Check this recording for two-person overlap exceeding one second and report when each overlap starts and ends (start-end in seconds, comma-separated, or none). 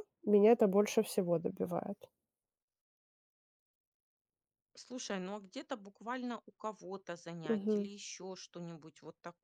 none